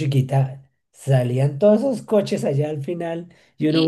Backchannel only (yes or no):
no